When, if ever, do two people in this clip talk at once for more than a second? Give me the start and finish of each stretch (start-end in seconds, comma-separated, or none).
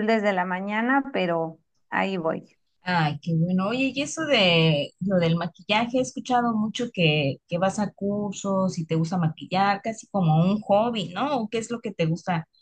none